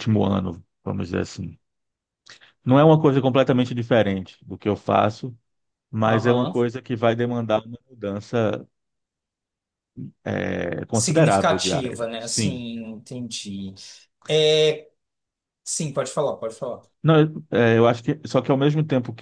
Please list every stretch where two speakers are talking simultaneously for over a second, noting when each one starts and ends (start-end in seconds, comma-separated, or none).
10.9-12.6